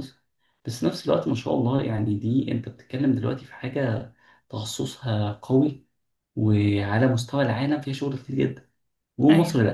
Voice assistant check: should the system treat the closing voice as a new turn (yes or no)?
no